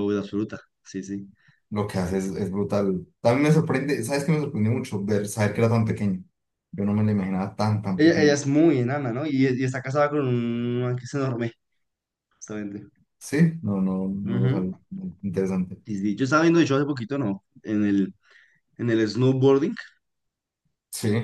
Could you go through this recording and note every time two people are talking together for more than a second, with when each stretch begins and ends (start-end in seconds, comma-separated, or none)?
none